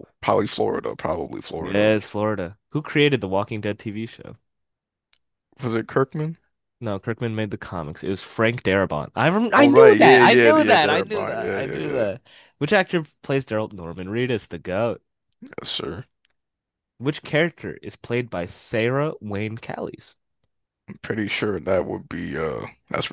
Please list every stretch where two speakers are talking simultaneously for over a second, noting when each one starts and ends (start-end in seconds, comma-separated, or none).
9.6-12.0